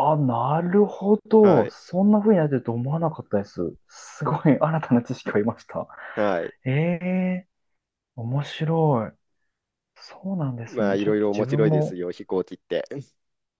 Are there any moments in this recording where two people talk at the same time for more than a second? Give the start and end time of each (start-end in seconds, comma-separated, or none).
10.7-12.0